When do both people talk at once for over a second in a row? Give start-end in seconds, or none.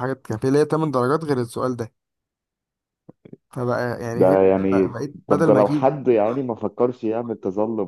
4.1-5.9